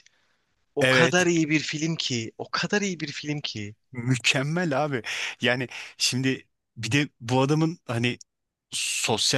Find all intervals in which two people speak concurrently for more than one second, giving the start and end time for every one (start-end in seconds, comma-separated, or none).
none